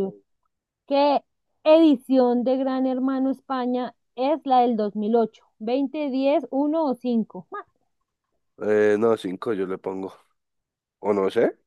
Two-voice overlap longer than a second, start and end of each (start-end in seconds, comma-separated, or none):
none